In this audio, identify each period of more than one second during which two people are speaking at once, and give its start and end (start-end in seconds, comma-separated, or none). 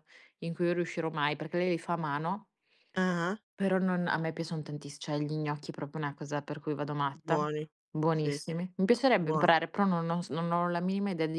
none